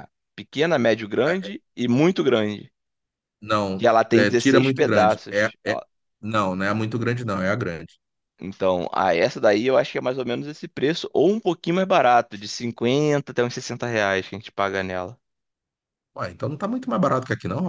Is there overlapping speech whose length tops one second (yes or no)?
yes